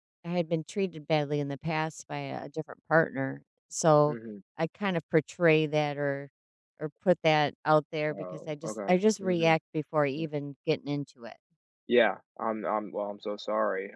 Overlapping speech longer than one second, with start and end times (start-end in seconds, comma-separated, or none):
8.1-9.6